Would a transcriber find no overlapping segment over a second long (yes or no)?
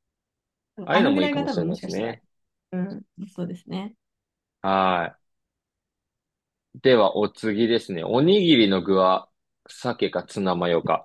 no